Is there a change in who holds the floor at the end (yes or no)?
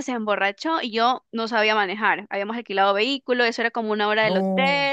no